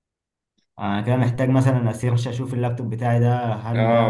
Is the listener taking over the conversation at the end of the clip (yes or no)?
yes